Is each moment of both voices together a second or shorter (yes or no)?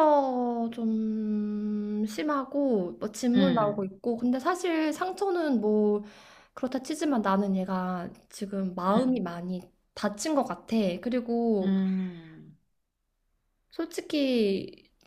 yes